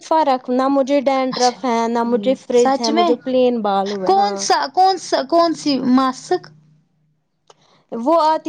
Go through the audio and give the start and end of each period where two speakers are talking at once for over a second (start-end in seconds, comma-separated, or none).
1.4-3.1